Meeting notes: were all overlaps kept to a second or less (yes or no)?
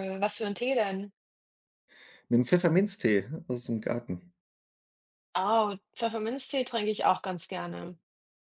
yes